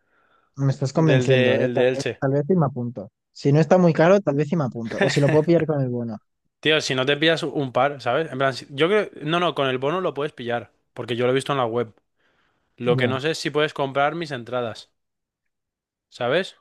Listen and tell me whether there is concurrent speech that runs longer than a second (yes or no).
yes